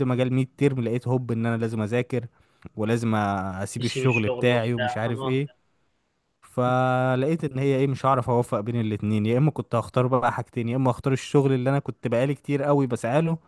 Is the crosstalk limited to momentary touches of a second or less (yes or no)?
no